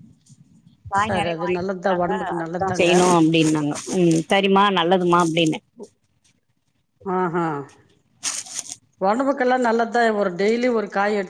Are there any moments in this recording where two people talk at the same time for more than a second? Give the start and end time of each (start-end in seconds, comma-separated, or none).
1.0-2.9